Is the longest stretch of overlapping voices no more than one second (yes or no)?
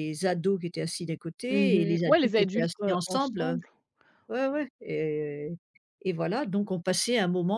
no